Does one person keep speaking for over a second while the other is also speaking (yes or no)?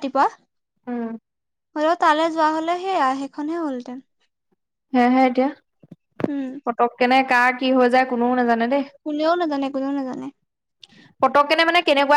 no